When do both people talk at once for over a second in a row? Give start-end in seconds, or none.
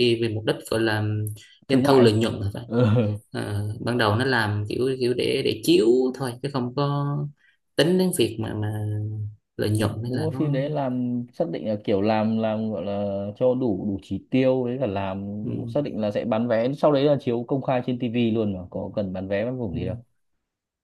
none